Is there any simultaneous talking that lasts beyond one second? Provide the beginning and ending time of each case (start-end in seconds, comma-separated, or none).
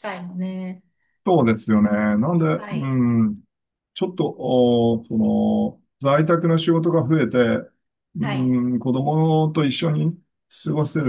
none